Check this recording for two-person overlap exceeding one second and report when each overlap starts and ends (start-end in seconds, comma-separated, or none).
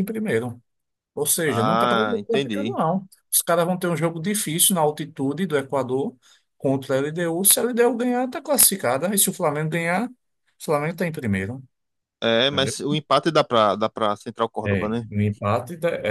1.4-2.8